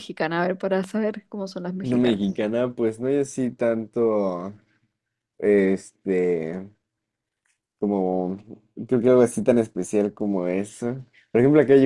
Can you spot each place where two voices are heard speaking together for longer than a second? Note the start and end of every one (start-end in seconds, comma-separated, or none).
none